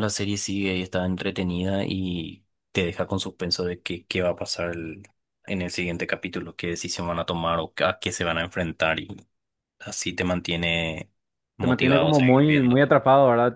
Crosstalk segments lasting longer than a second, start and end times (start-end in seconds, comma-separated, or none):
11.6-12.8